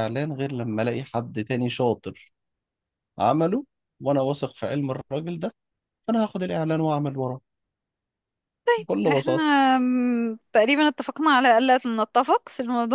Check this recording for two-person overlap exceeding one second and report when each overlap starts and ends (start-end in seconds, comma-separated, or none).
none